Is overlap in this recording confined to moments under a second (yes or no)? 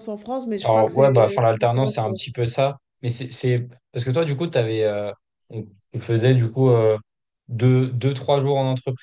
no